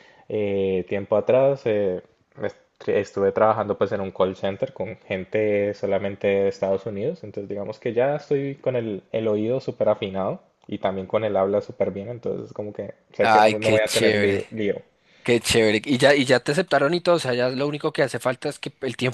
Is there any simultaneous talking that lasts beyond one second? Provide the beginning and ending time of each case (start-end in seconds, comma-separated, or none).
13.2-14.4